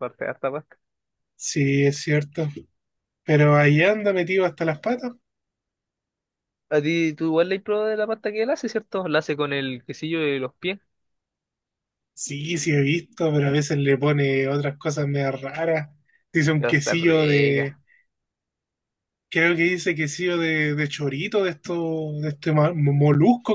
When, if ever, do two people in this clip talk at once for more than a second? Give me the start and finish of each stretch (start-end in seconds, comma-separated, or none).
16.6-17.8